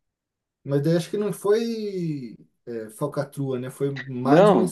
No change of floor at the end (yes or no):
no